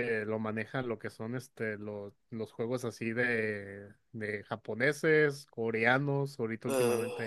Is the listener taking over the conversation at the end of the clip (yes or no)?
no